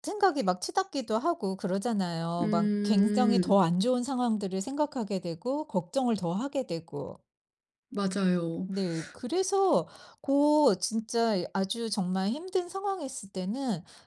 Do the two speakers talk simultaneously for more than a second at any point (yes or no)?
yes